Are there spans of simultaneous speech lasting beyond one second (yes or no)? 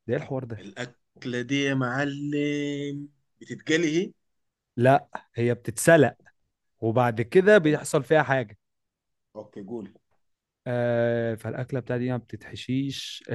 no